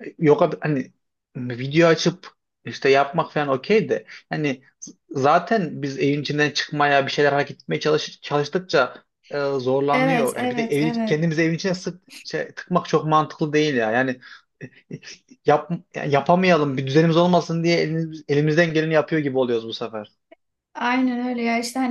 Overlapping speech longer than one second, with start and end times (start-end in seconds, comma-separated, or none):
9.9-11.2